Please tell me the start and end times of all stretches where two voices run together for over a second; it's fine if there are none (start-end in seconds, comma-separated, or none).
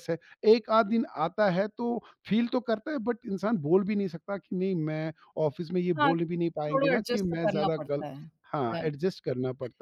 6.0-8.0